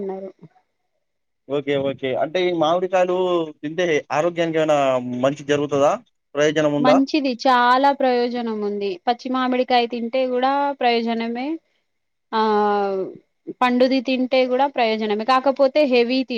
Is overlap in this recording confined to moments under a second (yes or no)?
yes